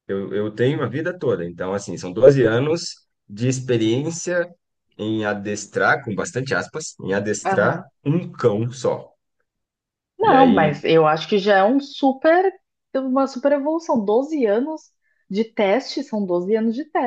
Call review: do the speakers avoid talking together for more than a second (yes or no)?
yes